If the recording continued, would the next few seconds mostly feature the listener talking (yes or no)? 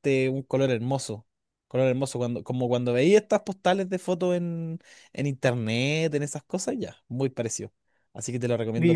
yes